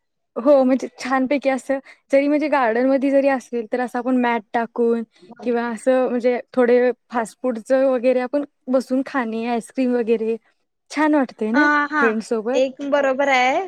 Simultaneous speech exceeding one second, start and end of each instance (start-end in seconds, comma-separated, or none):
none